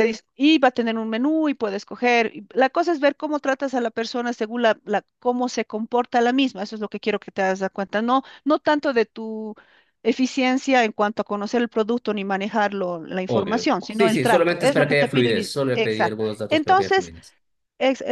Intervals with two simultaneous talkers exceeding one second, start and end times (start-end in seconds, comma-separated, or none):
13.3-17.1